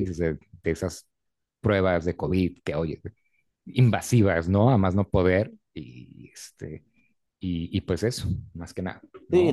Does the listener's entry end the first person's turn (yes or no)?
yes